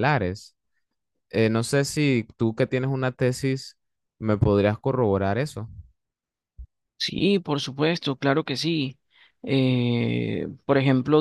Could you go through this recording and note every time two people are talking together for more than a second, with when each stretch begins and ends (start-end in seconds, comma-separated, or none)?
none